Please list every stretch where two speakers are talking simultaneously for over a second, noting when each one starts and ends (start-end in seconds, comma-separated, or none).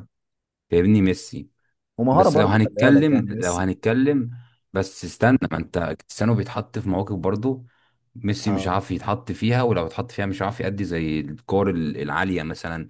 2.1-3.8